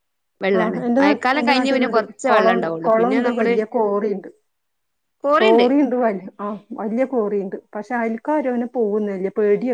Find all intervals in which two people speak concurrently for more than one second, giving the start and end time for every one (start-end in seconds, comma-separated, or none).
0.6-3.5